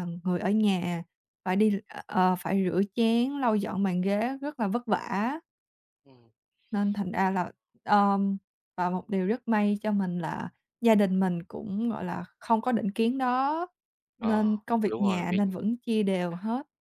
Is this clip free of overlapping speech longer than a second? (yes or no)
no